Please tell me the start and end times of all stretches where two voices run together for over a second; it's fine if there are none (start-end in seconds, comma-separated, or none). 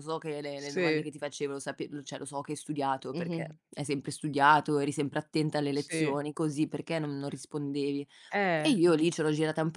none